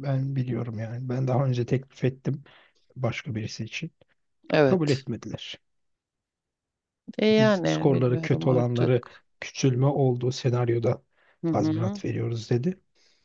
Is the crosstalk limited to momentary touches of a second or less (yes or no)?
no